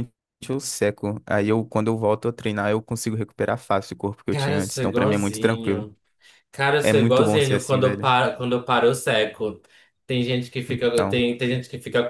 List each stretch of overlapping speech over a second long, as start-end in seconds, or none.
4.3-5.9, 6.8-8.1